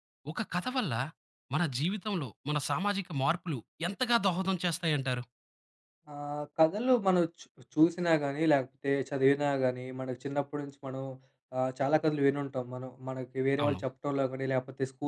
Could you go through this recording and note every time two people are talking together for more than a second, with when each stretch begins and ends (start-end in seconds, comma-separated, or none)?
none